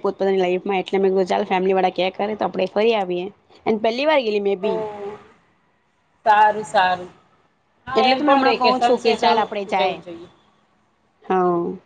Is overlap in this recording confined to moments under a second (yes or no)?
no